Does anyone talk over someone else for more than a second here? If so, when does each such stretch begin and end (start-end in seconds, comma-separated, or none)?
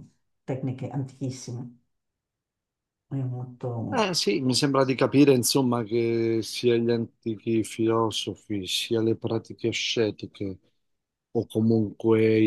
none